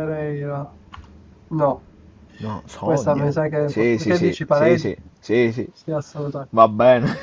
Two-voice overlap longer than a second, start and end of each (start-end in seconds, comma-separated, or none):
2.8-4.9